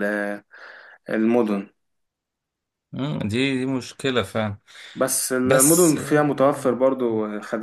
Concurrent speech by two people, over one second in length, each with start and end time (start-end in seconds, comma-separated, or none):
5.4-6.8